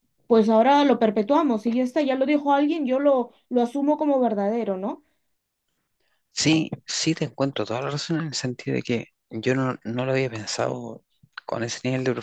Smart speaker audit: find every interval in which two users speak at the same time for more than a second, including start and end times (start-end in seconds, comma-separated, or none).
none